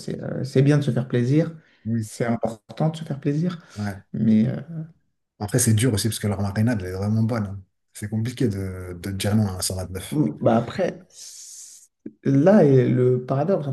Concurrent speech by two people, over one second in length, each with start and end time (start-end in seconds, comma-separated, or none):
none